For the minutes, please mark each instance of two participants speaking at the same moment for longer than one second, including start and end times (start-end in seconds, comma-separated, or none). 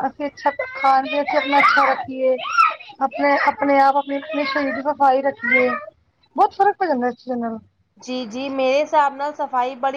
none